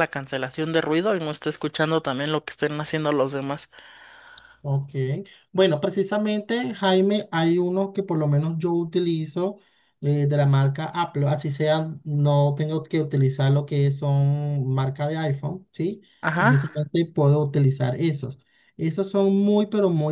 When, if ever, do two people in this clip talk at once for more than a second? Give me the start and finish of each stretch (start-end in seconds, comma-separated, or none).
none